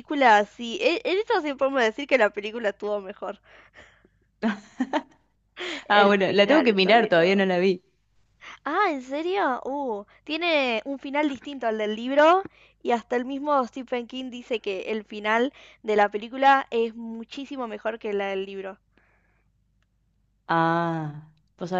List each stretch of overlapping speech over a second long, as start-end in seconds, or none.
5.9-7.4